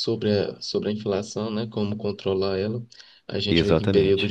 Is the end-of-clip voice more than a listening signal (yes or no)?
no